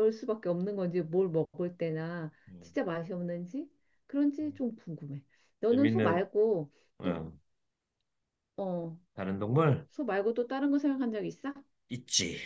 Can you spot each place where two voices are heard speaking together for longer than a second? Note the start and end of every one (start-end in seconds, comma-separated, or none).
none